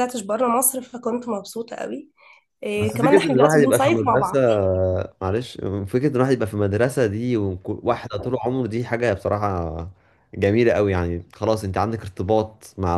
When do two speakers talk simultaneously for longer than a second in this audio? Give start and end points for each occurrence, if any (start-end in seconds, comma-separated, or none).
2.8-4.4